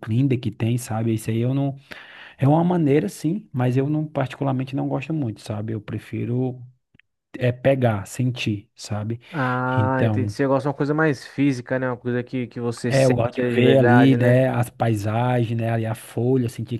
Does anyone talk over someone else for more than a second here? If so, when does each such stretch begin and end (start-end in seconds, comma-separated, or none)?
12.9-14.4